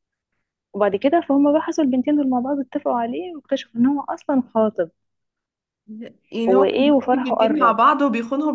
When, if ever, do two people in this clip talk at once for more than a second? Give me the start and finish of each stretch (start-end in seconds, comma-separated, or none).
6.5-7.8